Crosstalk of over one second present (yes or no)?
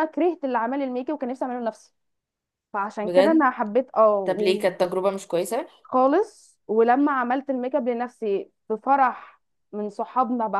no